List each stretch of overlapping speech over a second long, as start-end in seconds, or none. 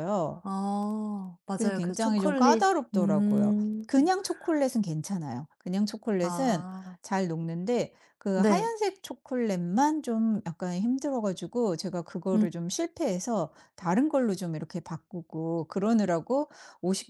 1.5-3.9